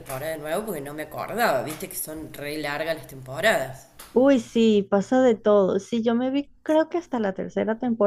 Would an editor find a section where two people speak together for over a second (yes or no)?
no